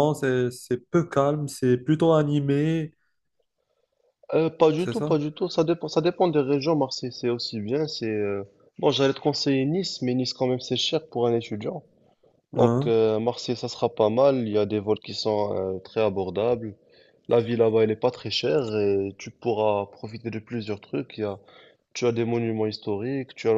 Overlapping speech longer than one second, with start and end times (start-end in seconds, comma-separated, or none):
none